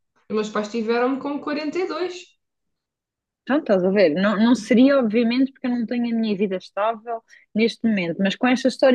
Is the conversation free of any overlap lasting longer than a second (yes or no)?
yes